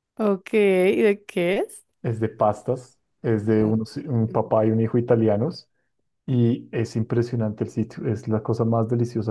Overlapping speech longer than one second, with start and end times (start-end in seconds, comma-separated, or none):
none